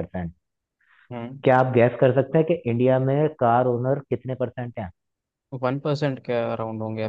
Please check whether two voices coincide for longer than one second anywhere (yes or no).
no